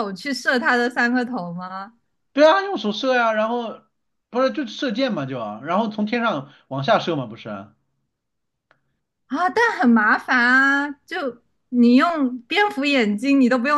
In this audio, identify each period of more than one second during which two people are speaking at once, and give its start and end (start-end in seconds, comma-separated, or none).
none